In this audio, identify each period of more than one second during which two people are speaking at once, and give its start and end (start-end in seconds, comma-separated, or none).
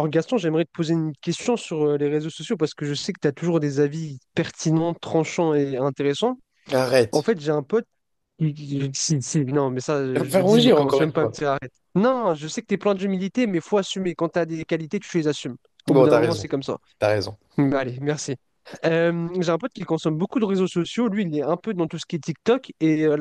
10.1-11.3